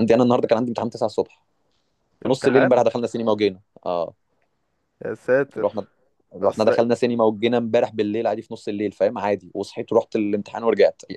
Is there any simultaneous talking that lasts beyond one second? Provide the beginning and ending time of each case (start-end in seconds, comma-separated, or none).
none